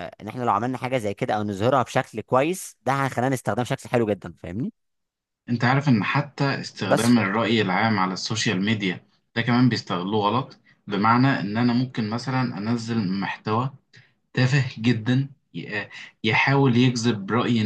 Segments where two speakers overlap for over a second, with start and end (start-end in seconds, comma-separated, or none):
none